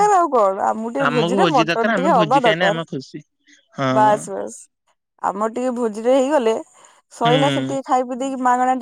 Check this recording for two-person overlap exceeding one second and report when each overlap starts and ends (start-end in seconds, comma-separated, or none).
1.0-2.8